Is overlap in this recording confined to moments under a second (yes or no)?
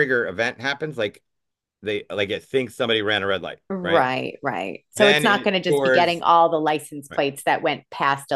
no